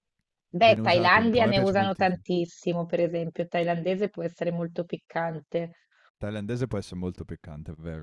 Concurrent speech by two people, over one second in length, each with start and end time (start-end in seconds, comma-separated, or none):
0.6-2.2